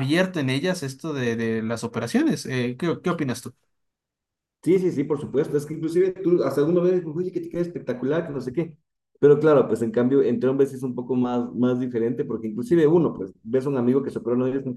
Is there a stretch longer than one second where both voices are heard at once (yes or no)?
no